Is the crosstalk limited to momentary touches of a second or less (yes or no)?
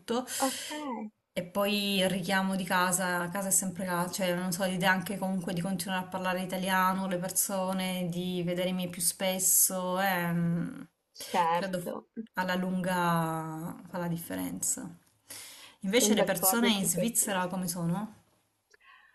no